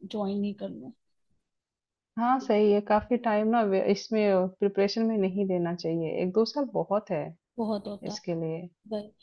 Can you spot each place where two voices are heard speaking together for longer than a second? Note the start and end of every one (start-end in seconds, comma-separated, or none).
none